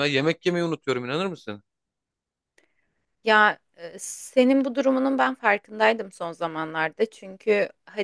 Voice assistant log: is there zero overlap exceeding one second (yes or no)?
yes